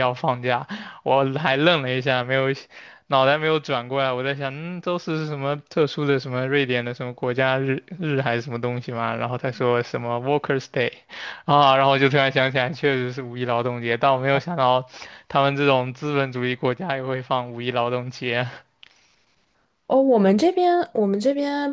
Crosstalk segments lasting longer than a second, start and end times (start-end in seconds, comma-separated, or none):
none